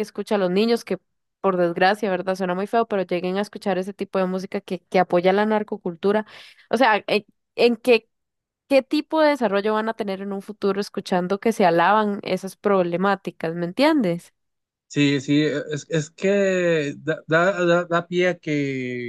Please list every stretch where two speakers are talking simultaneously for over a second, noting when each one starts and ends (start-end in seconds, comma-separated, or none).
none